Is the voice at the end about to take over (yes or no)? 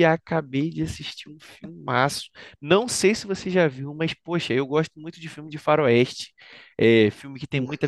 no